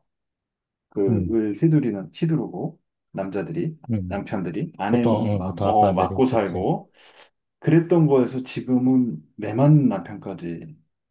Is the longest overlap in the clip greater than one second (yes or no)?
yes